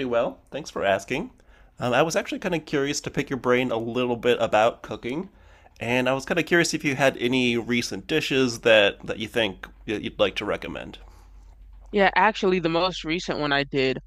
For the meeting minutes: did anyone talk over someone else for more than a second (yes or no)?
no